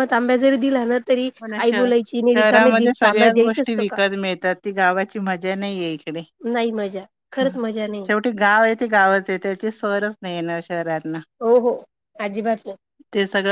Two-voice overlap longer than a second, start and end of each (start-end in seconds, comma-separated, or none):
2.4-4.0